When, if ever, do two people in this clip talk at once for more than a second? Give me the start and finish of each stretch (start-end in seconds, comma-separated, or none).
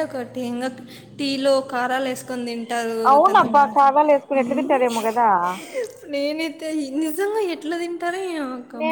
3.1-5.0